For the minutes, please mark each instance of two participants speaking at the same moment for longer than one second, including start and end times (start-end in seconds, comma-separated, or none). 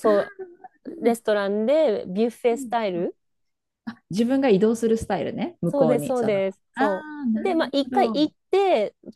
5.7-8.3